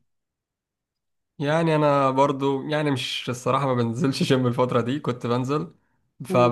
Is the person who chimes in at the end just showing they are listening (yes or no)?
yes